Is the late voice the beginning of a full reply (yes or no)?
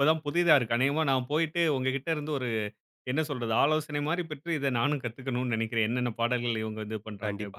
yes